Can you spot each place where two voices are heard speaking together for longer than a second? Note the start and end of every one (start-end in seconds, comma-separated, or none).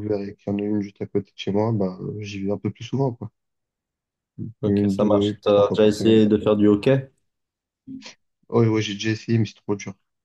4.7-6.2